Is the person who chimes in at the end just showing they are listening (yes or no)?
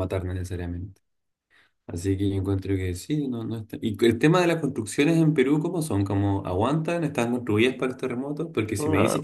yes